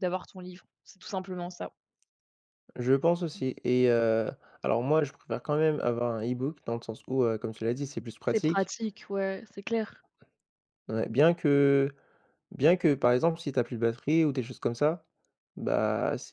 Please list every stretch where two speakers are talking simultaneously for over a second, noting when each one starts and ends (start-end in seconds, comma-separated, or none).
none